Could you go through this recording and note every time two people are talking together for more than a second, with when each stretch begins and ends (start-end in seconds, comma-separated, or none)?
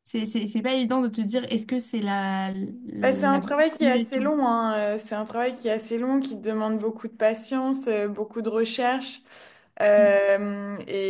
3.0-4.3